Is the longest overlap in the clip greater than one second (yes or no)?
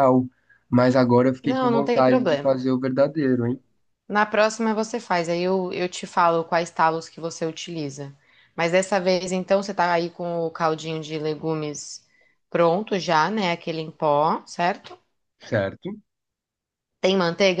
yes